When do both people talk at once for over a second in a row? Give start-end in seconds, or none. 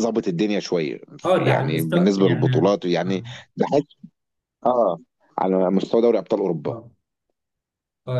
1.4-3.2